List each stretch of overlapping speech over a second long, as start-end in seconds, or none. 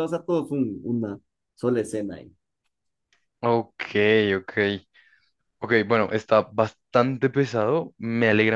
none